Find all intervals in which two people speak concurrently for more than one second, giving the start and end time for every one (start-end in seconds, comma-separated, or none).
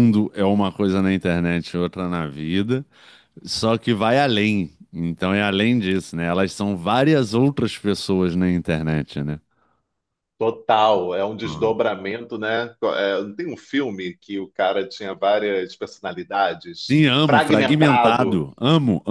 16.9-18.4